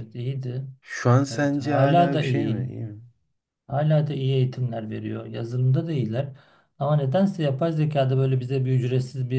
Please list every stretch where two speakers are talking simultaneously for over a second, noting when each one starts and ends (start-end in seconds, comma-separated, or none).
1.3-2.7